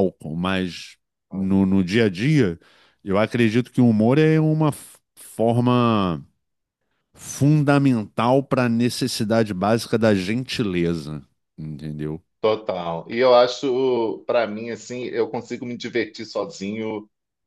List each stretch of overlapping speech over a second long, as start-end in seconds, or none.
none